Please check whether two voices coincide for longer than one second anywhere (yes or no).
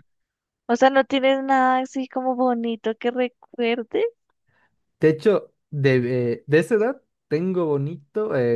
no